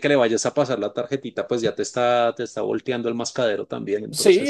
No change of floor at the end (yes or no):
no